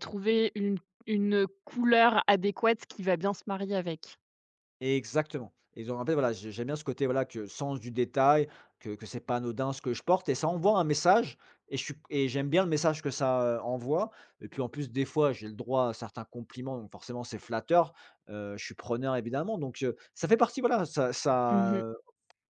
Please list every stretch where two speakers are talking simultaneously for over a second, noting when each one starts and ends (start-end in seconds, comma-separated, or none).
none